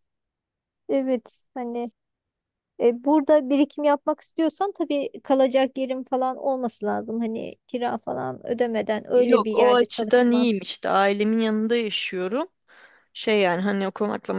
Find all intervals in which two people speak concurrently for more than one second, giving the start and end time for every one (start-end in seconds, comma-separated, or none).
9.1-10.5